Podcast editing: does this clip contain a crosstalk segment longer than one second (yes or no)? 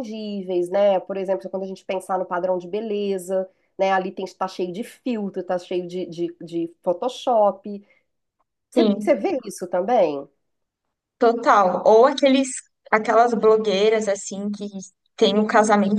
no